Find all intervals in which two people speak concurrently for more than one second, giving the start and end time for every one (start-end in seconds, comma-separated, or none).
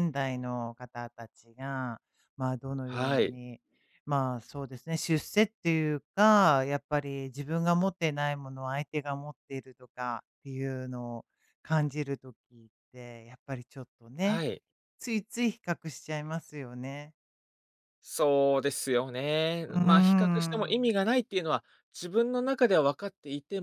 19.7-20.9